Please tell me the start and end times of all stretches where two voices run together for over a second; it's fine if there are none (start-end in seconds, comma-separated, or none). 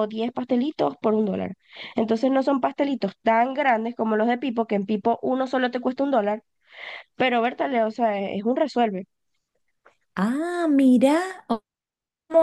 none